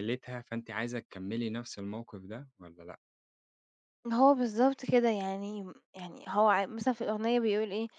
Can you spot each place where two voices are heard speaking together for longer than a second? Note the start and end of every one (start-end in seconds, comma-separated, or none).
none